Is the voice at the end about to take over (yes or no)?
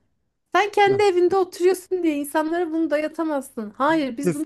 yes